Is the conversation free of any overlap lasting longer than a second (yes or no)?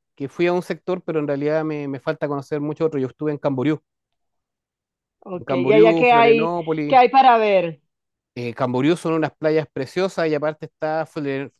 no